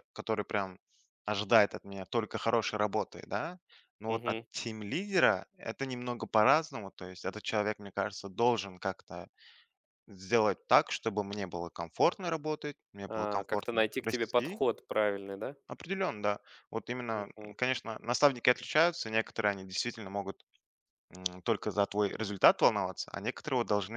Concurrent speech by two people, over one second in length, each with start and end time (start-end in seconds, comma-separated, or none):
13.1-14.6